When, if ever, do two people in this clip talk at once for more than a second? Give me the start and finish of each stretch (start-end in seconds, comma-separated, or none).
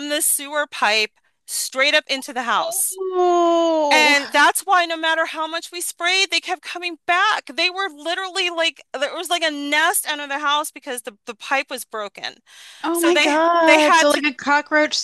12.9-14.2